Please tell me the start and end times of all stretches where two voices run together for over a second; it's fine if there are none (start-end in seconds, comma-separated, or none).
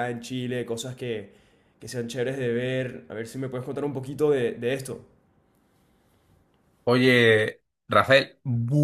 none